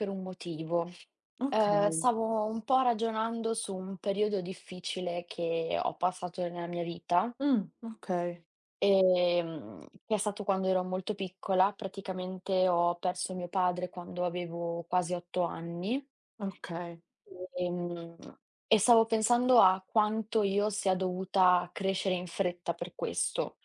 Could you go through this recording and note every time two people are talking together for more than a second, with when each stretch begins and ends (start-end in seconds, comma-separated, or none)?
none